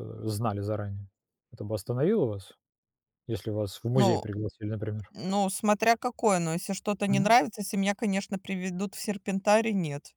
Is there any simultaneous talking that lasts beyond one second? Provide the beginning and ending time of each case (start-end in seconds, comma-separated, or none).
none